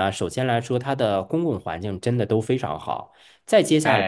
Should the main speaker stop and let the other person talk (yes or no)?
no